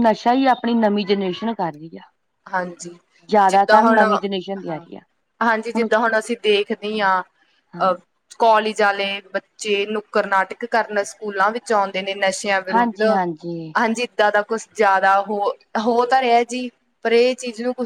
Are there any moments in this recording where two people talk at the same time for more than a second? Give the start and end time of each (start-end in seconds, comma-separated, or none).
3.5-4.8